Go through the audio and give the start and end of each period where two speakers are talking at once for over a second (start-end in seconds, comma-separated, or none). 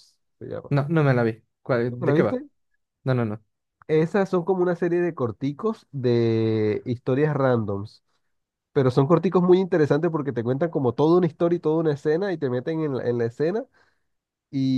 none